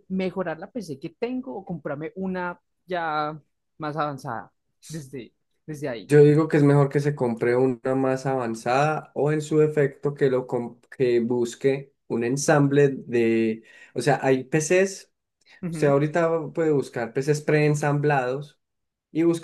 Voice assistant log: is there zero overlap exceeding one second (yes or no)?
yes